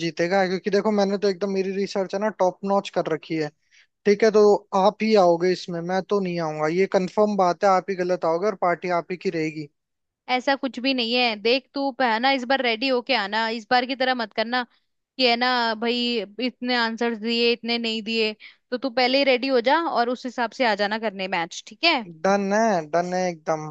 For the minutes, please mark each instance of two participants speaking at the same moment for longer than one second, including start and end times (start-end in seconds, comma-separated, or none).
none